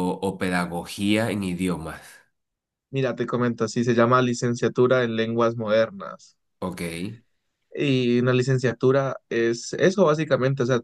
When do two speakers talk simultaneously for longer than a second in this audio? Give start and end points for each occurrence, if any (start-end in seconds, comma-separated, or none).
none